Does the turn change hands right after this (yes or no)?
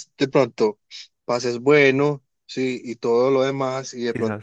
no